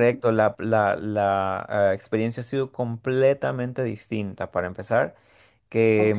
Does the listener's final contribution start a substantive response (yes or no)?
no